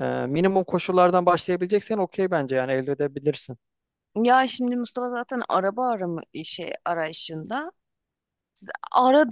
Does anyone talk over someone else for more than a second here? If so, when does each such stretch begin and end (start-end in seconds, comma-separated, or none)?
none